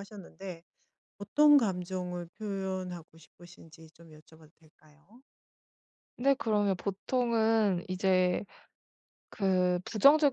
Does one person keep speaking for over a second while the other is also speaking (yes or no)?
no